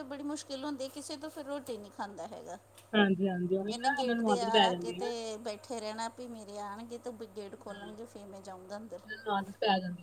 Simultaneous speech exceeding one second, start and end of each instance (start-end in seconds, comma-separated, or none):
3.7-5.1